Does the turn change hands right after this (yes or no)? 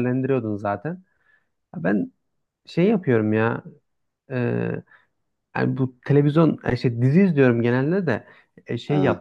no